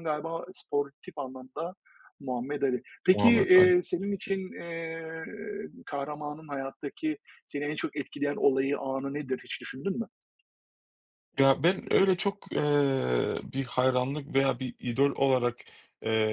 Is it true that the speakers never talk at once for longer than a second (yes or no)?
yes